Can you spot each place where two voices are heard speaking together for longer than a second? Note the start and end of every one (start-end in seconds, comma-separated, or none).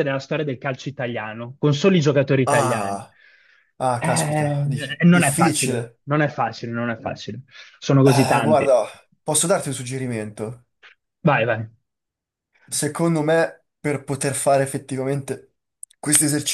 4.0-6.0